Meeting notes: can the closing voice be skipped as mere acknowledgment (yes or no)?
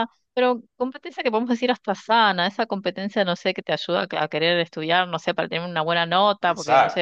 yes